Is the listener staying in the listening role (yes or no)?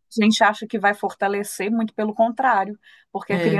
yes